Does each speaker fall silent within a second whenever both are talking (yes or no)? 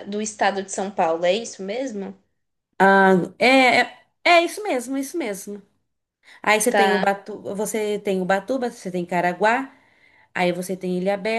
yes